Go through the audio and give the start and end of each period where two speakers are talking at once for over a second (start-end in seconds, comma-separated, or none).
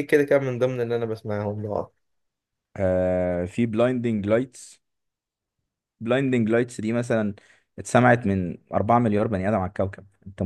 none